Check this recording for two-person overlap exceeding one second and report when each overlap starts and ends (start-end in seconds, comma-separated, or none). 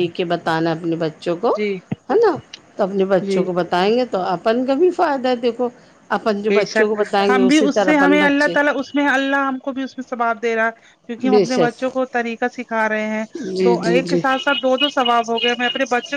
6.5-8.5